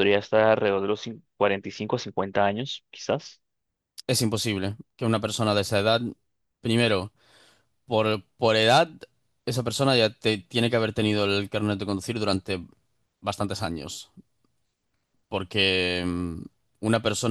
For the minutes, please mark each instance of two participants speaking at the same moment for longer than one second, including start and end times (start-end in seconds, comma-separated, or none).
none